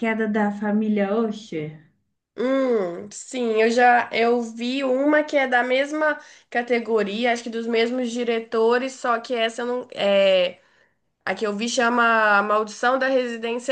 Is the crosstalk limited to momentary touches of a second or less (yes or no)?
yes